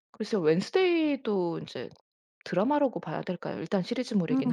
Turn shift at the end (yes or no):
yes